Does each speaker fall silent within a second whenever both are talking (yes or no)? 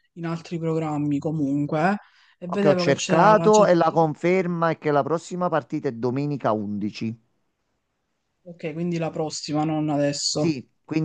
no